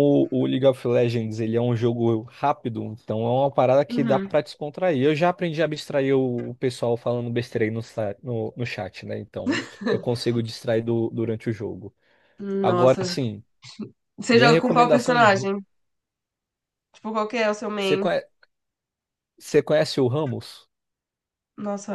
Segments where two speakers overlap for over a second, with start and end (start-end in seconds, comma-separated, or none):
14.3-15.5